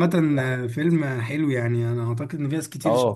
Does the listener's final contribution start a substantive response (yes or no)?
yes